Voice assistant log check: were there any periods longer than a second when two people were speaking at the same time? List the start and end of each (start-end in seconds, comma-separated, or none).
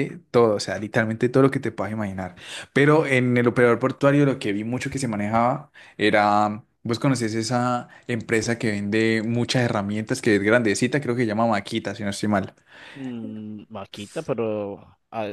none